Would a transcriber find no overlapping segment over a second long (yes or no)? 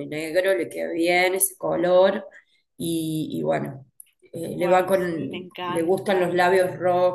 no